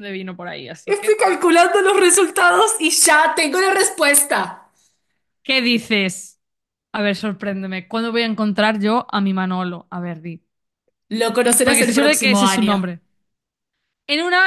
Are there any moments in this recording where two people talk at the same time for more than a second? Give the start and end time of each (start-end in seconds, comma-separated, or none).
11.6-12.9